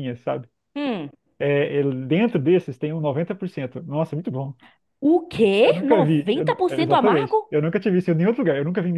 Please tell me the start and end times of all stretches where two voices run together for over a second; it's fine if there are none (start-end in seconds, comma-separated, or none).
5.6-7.5